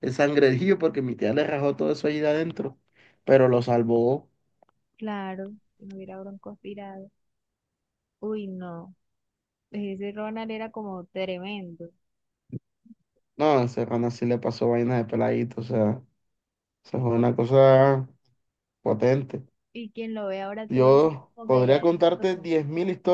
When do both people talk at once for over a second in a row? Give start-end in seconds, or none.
20.7-22.5